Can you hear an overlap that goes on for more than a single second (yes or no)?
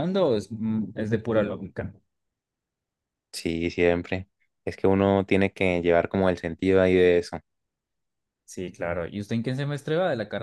no